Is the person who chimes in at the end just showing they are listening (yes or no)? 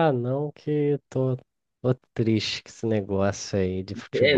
no